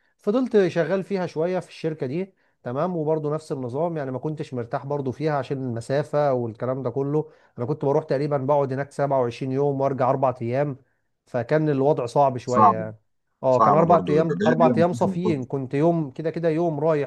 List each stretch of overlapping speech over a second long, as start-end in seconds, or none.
13.6-15.5